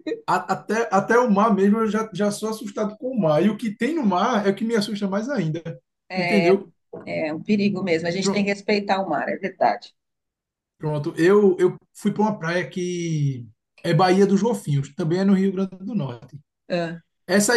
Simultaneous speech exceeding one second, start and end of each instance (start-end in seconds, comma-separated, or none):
none